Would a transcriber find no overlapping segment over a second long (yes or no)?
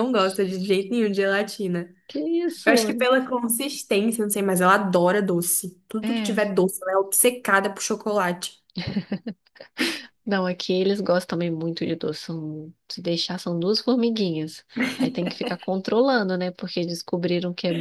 yes